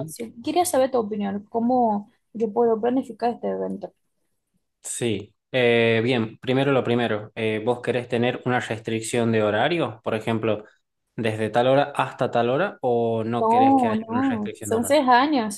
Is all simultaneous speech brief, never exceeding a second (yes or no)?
no